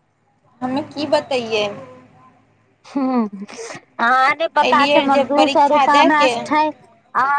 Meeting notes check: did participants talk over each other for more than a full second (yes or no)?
yes